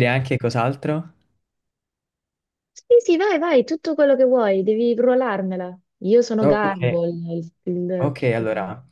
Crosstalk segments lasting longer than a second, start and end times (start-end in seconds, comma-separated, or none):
none